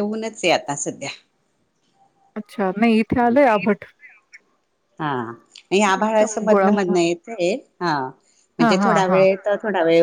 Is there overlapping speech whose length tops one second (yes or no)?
no